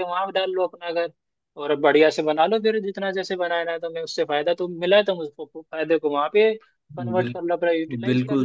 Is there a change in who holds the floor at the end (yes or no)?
yes